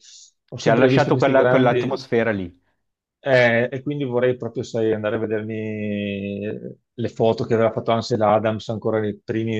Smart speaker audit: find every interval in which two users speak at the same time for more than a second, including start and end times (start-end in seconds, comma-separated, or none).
0.6-2.0